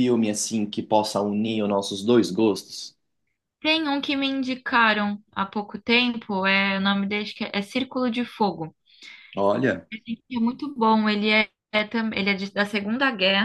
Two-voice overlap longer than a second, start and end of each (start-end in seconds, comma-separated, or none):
none